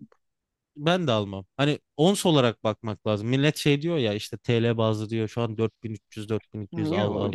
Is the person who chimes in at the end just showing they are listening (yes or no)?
no